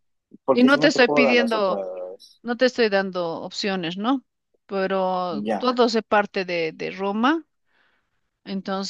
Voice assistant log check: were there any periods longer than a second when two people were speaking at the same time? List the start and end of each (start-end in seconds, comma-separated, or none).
0.5-1.8